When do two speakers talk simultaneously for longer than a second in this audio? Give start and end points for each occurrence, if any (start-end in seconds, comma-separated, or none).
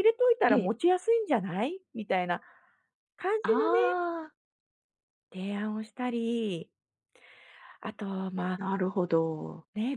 none